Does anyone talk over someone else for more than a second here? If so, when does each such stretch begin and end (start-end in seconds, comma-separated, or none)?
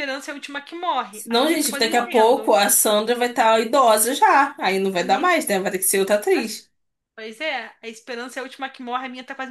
1.3-2.5